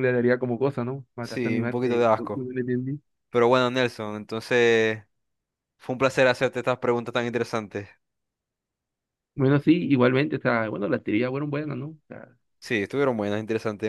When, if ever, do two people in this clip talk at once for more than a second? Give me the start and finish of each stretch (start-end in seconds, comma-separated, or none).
1.2-2.5